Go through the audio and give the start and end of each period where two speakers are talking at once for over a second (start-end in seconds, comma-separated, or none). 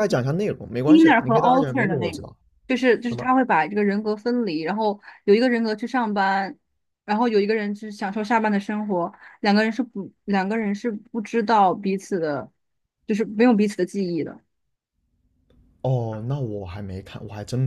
0.8-2.2